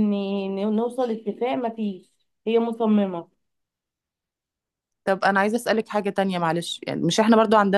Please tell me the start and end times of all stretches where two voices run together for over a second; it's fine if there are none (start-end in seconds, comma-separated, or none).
none